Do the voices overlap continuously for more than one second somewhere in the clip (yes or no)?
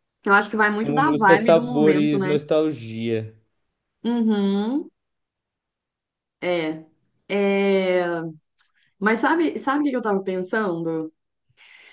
yes